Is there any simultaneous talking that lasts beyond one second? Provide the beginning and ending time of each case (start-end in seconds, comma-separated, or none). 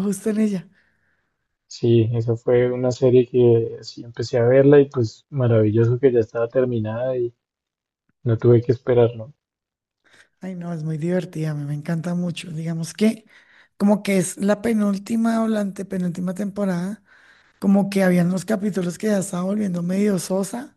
none